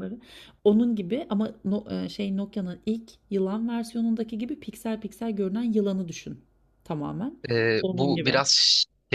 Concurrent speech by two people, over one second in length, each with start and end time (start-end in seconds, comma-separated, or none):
none